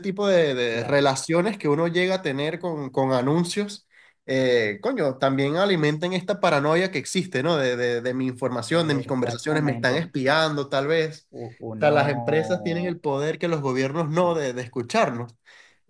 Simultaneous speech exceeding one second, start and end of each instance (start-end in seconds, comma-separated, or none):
8.7-10.1